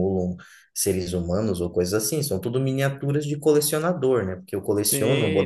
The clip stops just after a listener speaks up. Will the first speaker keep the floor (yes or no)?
no